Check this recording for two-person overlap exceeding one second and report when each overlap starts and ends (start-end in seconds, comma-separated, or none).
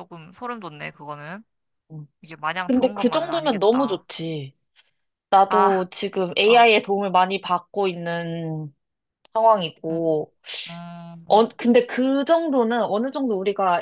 2.6-4.0